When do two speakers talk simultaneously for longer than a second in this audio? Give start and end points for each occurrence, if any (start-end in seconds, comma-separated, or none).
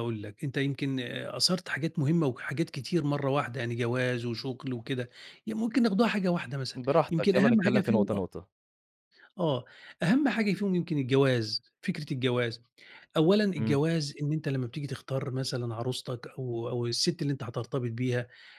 6.7-8.2